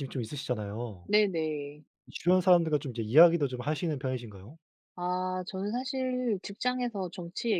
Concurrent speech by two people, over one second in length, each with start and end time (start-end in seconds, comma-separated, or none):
none